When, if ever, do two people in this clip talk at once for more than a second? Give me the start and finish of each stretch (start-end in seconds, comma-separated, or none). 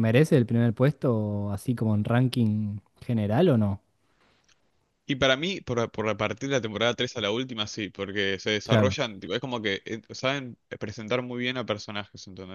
none